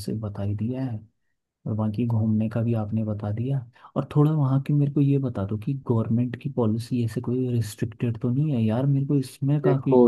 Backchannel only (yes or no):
no